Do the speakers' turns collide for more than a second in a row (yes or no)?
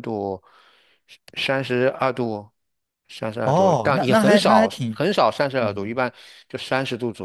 yes